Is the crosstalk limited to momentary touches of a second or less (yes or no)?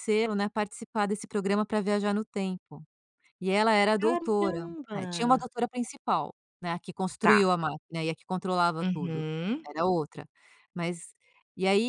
no